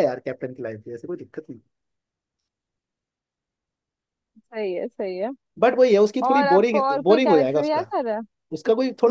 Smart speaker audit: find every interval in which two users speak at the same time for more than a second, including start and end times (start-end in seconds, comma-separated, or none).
6.2-7.9